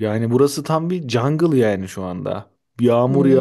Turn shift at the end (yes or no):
no